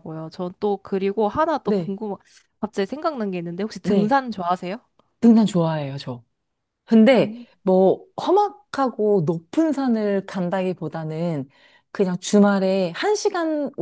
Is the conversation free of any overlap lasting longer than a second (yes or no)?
yes